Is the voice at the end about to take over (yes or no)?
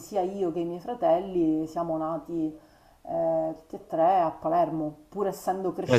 yes